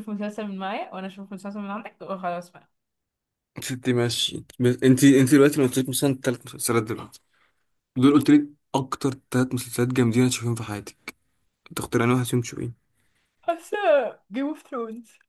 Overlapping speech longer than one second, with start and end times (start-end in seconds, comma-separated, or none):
none